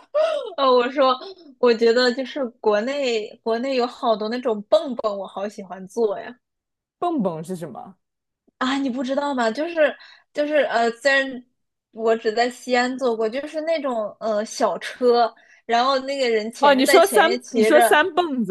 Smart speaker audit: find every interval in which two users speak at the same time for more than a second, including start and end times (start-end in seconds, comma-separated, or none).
16.6-18.0